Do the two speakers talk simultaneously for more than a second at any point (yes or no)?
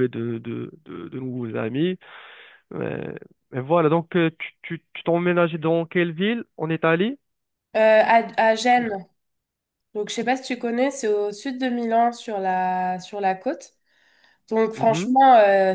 no